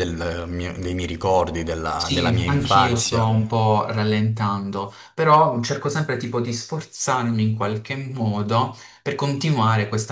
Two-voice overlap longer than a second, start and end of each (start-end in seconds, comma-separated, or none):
1.9-3.2